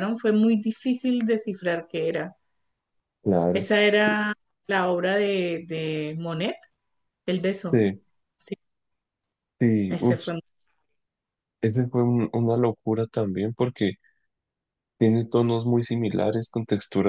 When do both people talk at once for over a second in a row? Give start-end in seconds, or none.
none